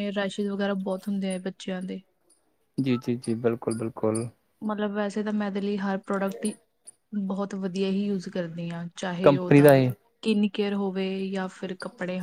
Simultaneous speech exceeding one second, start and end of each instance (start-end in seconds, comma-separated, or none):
none